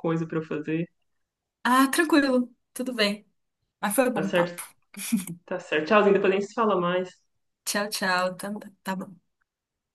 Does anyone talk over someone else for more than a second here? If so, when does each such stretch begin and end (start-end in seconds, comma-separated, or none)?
none